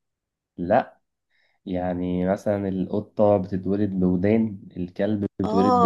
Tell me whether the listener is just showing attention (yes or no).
no